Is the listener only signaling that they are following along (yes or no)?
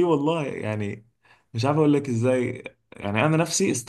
yes